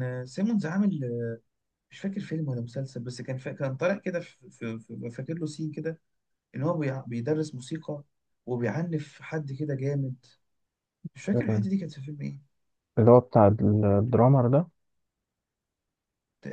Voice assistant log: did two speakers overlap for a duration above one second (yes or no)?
no